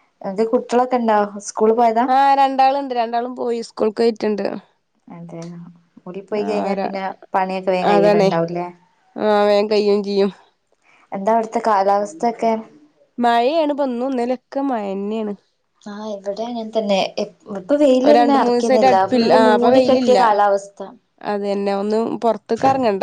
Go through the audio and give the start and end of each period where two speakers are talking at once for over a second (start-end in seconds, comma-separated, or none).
18.0-20.2